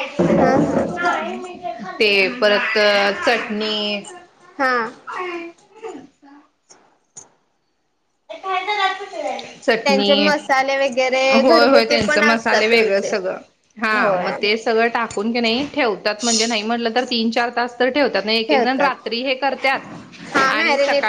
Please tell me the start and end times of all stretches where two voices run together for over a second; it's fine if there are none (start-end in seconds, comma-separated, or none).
11.4-13.1